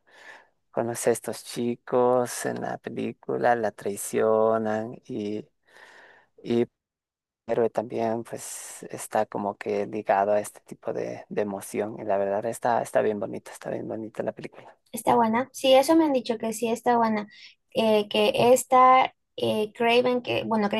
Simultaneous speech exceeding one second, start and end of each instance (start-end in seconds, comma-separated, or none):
none